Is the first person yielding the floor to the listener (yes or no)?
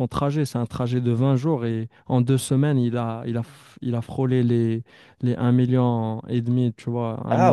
yes